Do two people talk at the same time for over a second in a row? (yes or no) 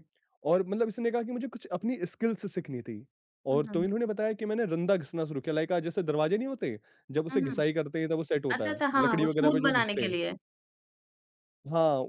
yes